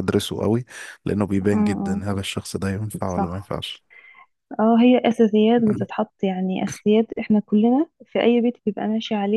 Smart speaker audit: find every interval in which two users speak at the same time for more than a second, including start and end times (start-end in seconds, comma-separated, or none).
none